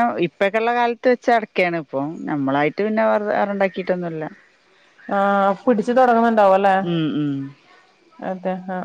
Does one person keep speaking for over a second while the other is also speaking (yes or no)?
no